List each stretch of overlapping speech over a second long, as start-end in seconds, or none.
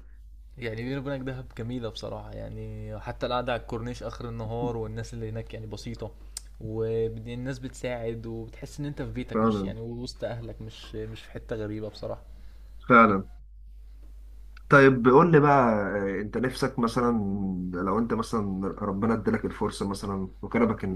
none